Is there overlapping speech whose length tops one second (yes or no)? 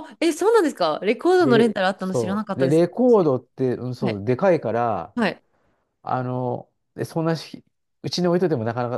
yes